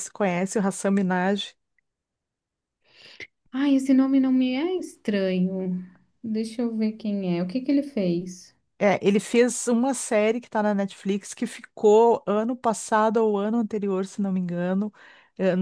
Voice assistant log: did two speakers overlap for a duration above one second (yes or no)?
no